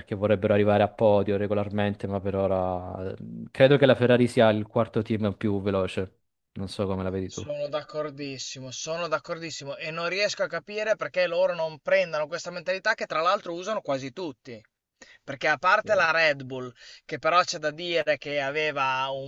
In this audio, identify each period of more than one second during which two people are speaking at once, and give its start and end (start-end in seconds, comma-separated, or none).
none